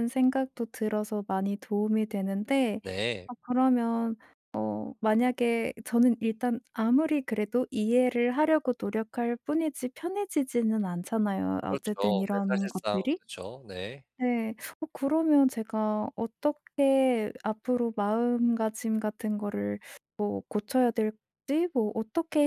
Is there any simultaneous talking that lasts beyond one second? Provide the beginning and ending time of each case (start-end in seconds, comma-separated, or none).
11.7-13.2